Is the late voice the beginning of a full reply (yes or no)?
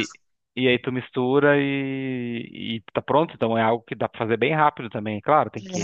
no